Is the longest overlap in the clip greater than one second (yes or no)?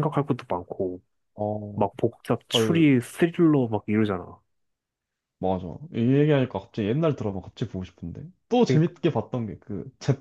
no